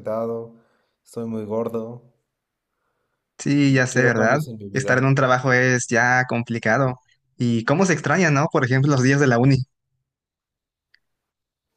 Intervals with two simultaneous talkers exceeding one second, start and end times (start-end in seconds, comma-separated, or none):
3.6-5.1